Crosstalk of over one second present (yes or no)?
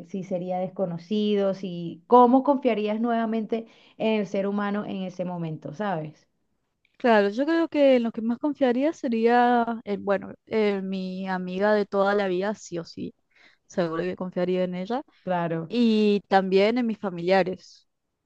no